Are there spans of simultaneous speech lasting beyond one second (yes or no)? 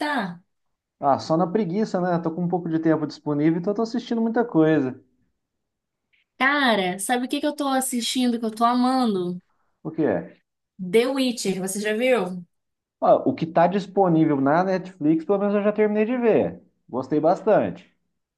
no